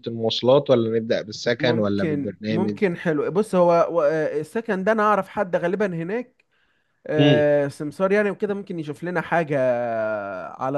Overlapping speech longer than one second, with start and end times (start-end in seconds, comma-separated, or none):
1.6-2.8